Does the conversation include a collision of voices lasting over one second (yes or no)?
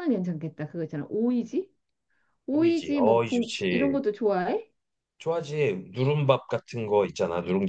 yes